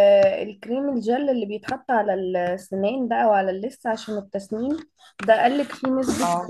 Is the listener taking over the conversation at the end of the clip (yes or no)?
no